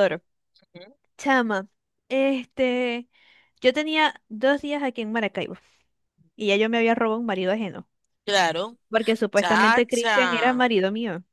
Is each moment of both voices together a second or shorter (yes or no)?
no